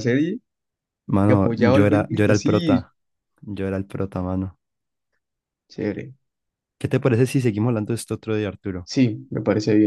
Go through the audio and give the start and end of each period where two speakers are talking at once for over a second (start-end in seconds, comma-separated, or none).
1.2-2.9